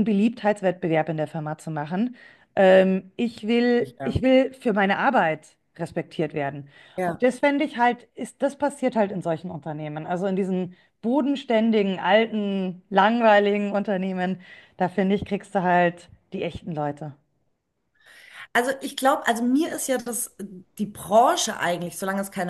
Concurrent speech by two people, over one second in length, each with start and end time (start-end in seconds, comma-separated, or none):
none